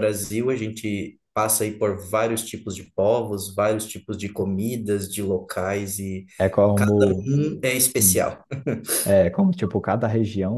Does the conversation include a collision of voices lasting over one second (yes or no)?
no